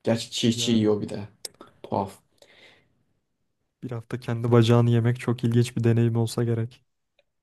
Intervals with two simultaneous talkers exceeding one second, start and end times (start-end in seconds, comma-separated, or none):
none